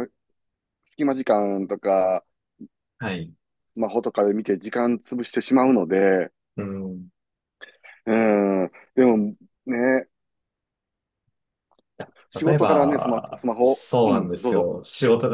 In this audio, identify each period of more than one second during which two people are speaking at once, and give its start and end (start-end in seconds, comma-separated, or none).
12.4-14.7